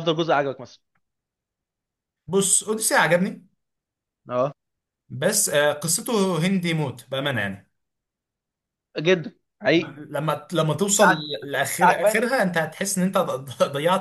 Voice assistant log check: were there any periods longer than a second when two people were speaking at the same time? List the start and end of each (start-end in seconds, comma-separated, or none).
10.9-12.6